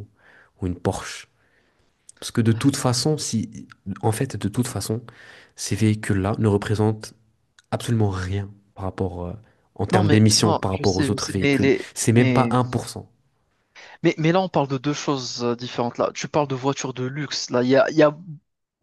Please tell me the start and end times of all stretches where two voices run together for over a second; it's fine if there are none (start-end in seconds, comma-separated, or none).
9.9-12.5